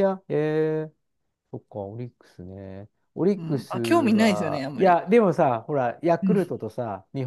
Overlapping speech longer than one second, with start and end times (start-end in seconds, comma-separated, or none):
3.4-5.0